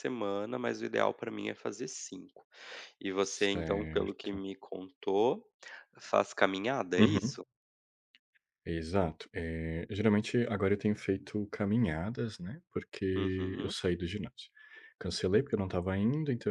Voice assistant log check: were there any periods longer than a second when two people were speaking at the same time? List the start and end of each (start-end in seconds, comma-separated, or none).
3.2-4.5